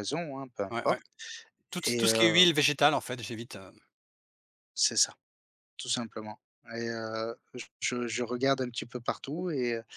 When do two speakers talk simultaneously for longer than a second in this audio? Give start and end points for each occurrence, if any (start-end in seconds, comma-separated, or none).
none